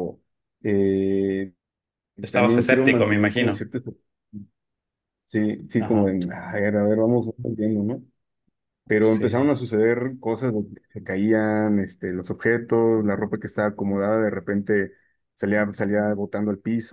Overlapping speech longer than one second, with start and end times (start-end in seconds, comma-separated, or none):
2.3-3.6